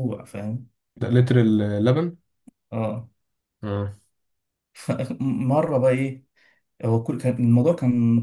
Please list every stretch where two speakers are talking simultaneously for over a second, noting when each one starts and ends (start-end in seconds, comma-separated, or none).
none